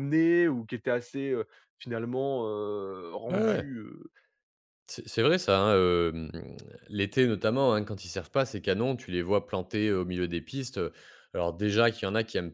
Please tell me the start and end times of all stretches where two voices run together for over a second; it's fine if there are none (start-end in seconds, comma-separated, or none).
none